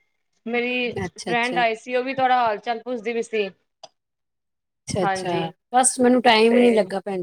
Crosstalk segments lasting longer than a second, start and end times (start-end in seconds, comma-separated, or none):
none